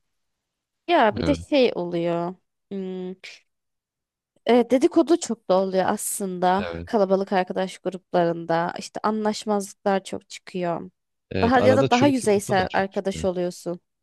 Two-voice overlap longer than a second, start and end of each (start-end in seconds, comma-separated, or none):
11.4-13.3